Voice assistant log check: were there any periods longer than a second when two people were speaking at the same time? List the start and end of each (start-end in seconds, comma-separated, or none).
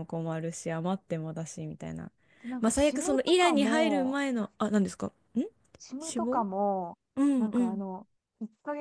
2.6-4.5